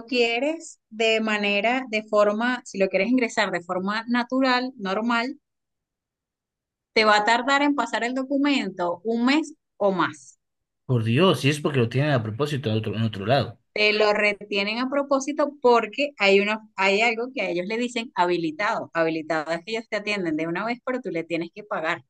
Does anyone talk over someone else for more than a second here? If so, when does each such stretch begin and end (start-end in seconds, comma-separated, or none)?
none